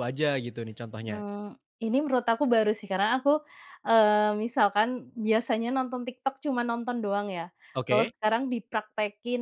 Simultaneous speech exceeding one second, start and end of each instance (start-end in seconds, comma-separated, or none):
none